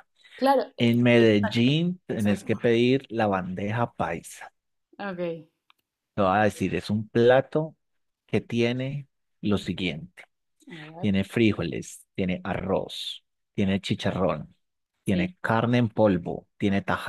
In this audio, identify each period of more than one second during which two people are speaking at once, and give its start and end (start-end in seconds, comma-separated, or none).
0.8-2.7